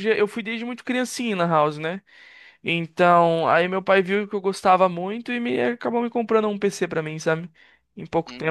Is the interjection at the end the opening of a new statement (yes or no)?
yes